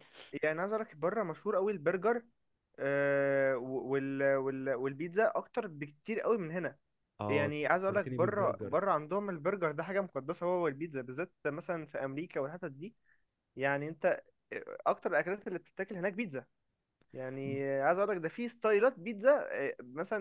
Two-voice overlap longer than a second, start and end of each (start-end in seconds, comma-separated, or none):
7.3-8.8